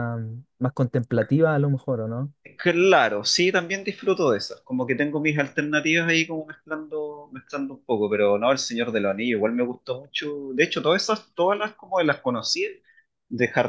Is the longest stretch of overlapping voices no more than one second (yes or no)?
yes